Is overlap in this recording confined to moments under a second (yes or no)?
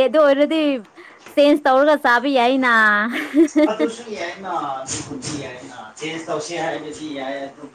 yes